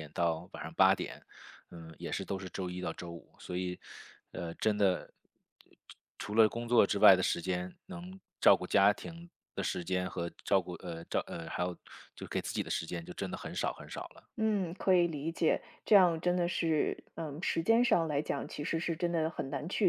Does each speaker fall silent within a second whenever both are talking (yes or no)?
yes